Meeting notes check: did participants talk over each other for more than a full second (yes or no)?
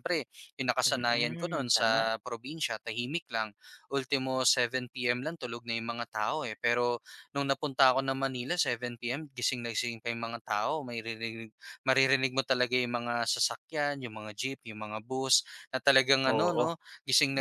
yes